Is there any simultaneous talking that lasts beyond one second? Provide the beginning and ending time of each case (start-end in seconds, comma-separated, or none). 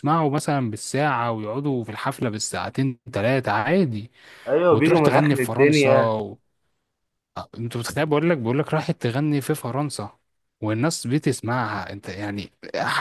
4.7-6.2